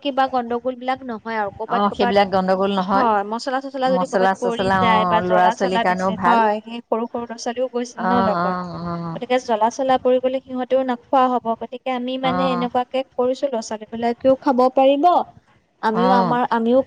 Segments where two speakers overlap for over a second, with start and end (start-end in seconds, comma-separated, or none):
4.0-6.4